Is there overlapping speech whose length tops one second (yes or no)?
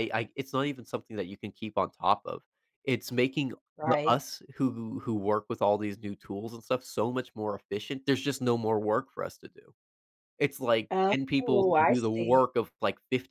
yes